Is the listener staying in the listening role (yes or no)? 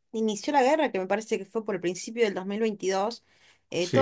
yes